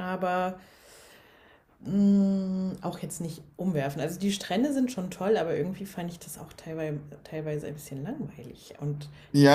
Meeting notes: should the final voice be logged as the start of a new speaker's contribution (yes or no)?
yes